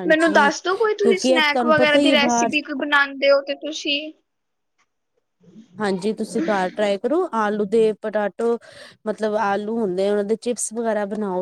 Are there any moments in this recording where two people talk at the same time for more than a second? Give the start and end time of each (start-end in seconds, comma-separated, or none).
1.0-2.5